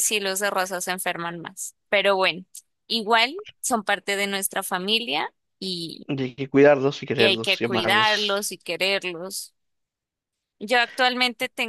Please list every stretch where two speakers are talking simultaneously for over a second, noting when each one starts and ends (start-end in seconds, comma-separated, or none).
7.2-8.4